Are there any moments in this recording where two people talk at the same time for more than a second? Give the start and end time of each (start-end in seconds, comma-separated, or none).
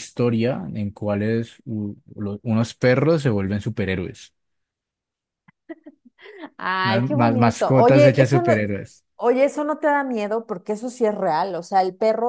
6.8-8.5